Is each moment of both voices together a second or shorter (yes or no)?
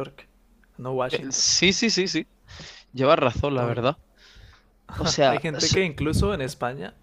yes